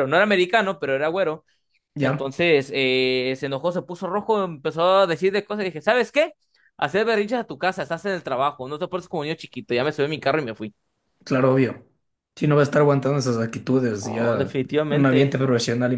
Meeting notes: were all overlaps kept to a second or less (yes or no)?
no